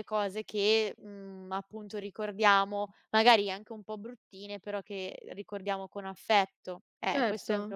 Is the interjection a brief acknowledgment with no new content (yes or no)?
no